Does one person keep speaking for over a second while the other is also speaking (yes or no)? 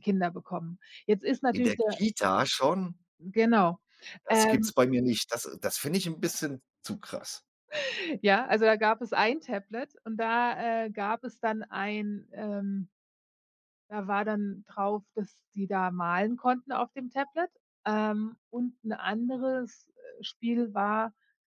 no